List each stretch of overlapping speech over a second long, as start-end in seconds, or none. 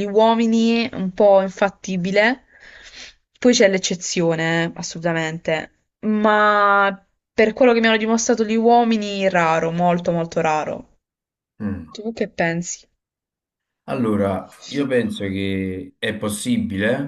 none